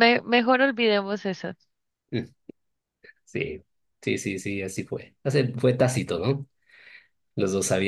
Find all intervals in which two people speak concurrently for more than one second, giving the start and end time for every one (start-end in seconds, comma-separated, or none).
none